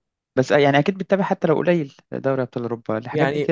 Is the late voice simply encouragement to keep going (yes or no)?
no